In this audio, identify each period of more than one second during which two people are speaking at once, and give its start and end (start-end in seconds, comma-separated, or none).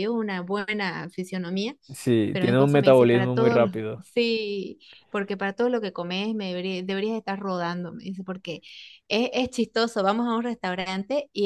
2.3-3.7